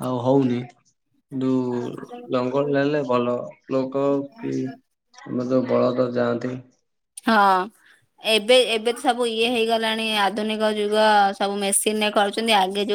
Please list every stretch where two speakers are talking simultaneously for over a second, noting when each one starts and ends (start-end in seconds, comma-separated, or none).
none